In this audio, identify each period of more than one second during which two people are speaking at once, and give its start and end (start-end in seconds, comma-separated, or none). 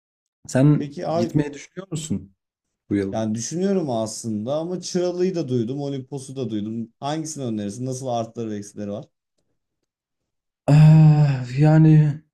none